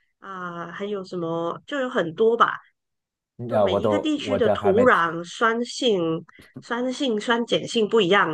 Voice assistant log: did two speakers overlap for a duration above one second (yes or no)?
yes